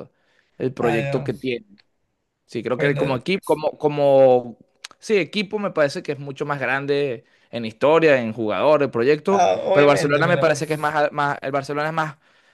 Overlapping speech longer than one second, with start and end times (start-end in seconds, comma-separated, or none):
9.3-10.6